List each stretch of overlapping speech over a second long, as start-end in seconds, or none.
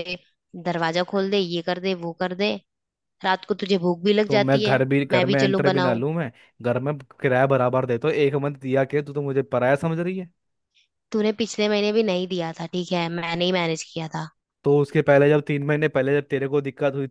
4.3-6.0